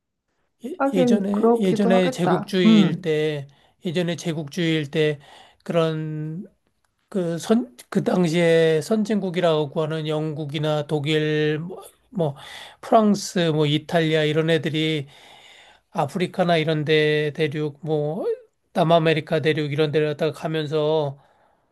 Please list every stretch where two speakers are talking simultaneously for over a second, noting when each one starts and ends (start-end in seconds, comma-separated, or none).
0.8-3.1